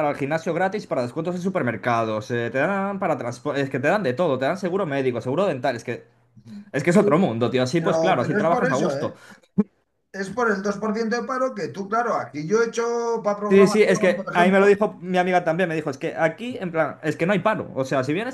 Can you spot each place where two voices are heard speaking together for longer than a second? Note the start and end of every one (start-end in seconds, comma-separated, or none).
7.8-9.2, 13.5-14.8